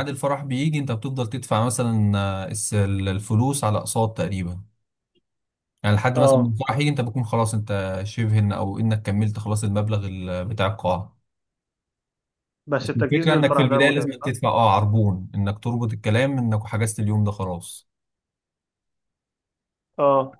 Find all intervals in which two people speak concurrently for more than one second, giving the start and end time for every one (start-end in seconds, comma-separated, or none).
12.8-14.3